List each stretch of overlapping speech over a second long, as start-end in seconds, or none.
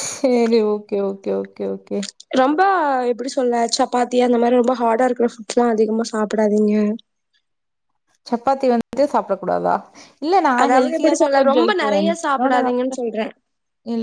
10.6-13.0